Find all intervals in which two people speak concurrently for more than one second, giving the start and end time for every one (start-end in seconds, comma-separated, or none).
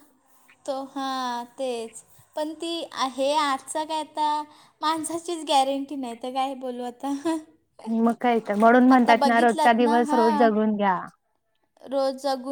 9.0-10.5